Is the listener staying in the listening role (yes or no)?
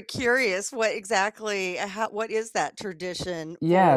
no